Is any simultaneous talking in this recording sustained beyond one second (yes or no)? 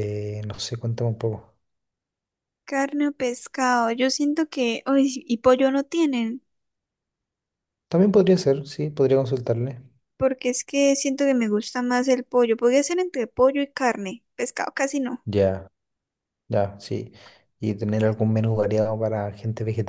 no